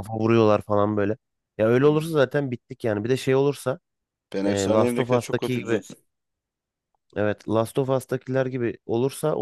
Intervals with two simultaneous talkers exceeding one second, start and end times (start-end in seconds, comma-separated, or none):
4.4-5.8